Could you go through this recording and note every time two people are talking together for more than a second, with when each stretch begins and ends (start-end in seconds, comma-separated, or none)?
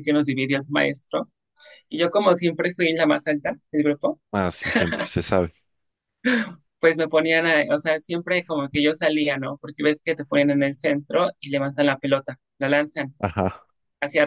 none